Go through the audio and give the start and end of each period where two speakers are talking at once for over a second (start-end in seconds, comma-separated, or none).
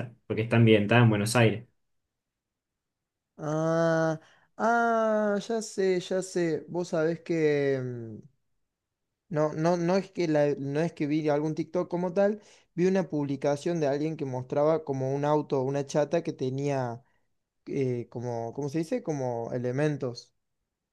none